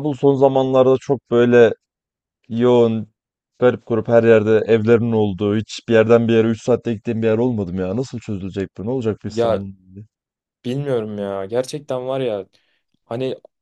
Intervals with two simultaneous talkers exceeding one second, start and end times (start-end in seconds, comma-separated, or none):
none